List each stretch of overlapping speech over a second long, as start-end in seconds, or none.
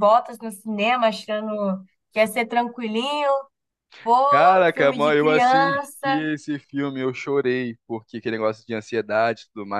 4.7-6.3